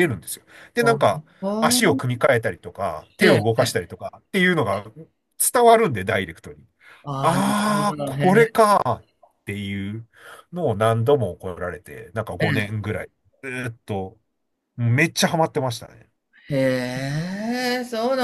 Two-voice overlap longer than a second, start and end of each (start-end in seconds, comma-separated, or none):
7.2-8.5